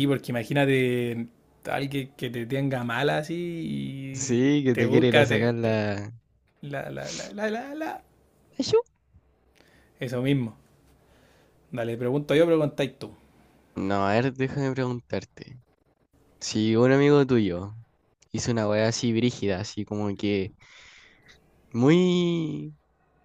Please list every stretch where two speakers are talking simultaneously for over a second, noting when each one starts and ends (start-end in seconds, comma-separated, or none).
4.1-5.8